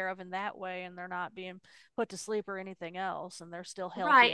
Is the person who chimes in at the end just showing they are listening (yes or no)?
no